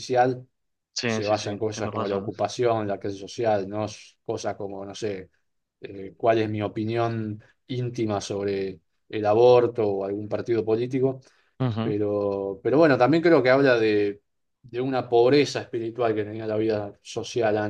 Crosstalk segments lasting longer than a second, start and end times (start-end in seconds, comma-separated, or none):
1.0-2.3